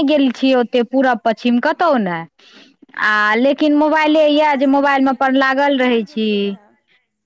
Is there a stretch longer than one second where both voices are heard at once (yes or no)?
yes